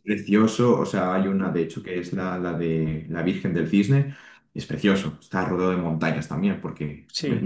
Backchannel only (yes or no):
yes